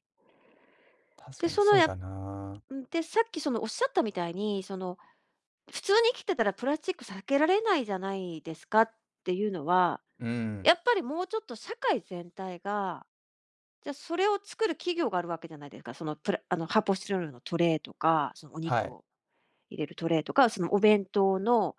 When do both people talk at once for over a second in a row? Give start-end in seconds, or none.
1.4-2.6